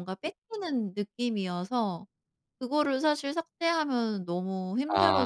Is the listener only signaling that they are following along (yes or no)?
no